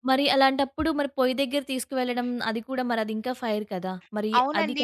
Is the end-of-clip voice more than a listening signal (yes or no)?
yes